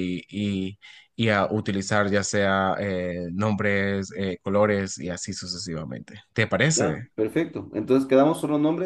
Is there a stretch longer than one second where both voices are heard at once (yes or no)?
no